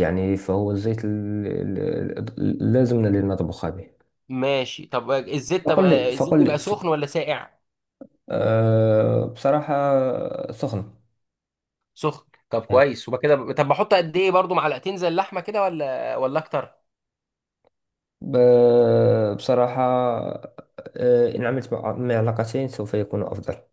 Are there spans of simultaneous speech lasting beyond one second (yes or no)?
yes